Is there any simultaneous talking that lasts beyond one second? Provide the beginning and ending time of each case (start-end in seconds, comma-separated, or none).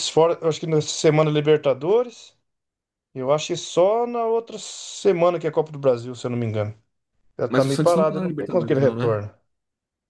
7.5-9.2